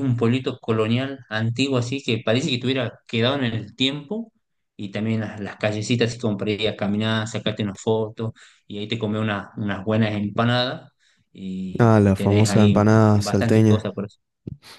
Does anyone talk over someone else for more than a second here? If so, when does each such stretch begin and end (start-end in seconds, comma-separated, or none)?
11.8-13.8